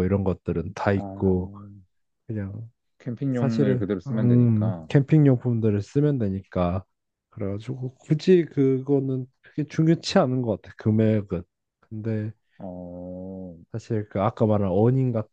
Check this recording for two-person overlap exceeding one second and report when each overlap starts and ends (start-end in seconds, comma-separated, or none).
3.3-4.9